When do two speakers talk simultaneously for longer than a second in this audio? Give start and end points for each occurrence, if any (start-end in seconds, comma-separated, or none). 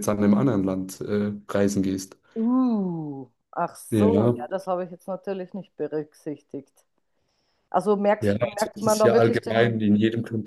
8.2-9.8